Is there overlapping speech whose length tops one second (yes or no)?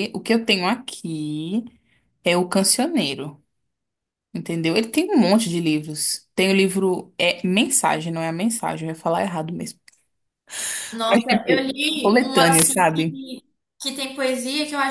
yes